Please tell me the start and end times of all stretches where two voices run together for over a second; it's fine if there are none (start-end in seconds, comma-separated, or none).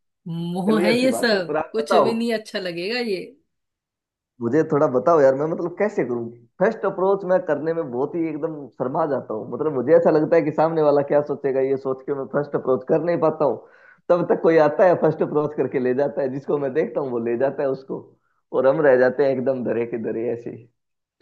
0.7-2.1